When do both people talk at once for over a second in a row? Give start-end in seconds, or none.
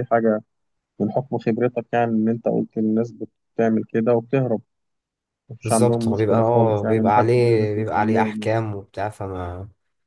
5.6-8.6